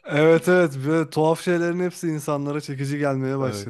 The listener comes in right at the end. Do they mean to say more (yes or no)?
yes